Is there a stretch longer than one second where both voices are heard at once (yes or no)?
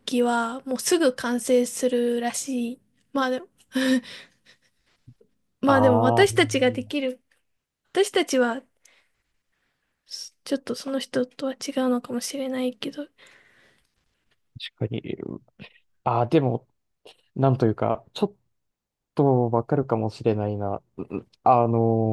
yes